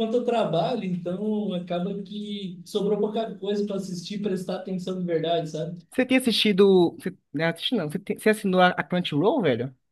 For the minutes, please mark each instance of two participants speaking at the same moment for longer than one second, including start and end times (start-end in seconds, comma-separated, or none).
none